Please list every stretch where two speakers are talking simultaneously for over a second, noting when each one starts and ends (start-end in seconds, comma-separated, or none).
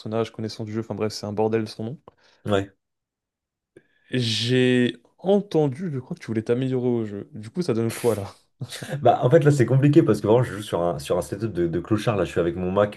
none